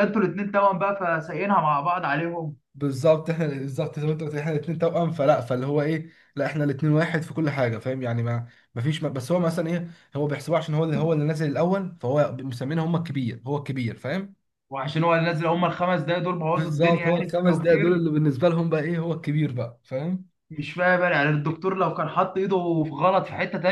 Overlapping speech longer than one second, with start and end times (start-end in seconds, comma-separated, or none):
16.5-18.0